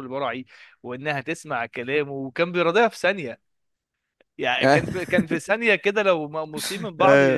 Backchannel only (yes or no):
yes